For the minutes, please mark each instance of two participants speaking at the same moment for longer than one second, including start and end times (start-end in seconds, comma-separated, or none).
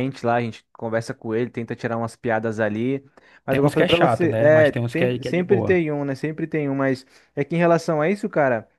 3.5-5.8